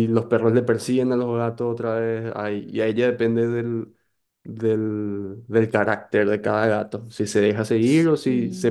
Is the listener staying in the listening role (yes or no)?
yes